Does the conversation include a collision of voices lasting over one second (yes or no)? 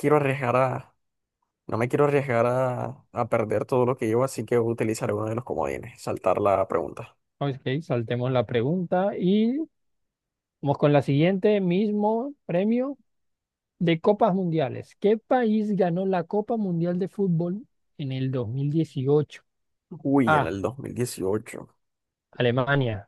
no